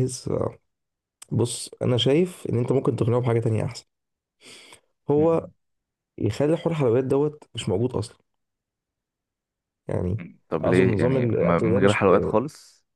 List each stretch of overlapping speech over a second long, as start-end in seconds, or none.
10.6-12.3